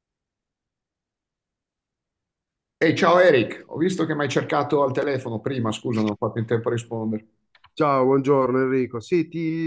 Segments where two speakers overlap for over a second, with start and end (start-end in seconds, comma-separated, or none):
none